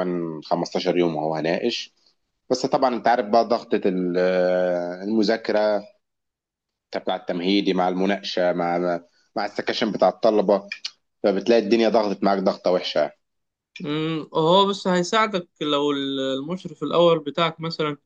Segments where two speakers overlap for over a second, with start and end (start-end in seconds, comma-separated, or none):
none